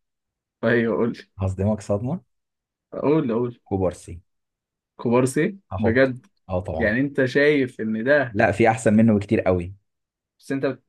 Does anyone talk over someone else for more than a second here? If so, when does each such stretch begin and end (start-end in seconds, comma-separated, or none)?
none